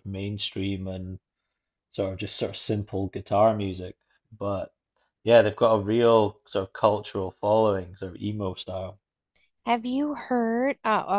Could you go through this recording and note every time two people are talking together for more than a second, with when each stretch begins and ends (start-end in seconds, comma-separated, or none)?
none